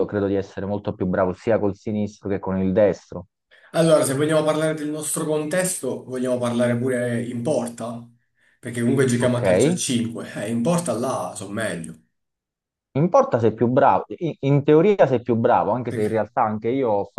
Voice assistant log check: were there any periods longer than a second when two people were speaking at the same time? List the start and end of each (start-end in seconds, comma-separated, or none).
none